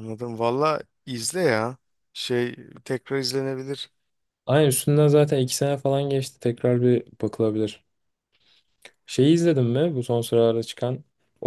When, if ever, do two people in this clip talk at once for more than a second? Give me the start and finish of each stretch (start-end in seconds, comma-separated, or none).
none